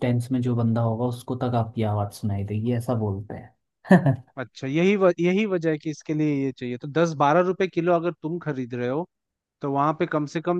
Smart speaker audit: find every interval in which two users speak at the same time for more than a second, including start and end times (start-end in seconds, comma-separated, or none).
none